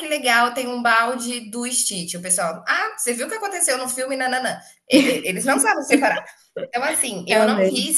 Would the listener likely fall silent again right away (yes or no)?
yes